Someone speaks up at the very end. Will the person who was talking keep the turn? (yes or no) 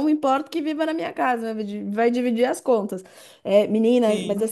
yes